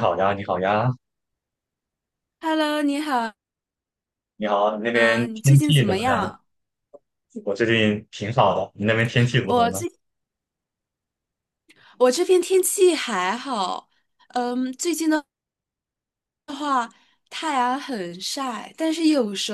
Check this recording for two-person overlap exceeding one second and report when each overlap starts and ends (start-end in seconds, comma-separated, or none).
4.9-6.3